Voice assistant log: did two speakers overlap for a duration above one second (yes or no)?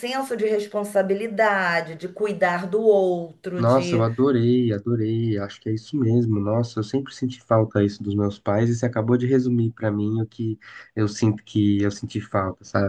no